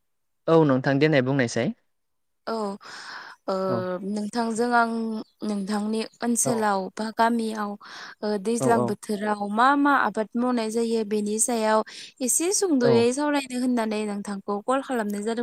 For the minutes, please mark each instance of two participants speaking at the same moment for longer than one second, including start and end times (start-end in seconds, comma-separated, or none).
none